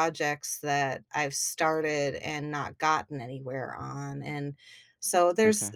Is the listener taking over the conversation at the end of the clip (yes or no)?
no